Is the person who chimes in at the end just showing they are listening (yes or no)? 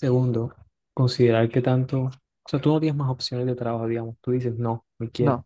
yes